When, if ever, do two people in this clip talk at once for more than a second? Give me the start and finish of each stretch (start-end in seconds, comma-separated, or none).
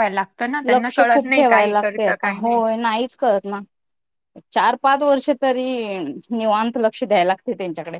0.7-2.6